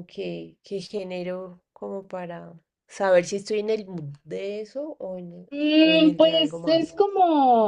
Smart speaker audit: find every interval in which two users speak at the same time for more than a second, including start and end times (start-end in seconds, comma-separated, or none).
5.5-7.0